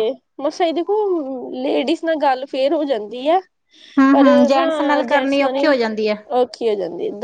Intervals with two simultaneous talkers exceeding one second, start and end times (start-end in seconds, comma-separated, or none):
4.1-5.7